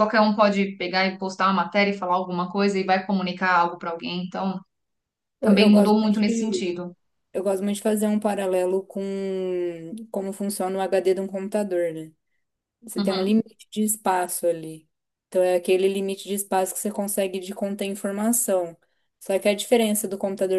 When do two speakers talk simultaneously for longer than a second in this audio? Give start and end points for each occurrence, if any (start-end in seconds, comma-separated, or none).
5.4-6.7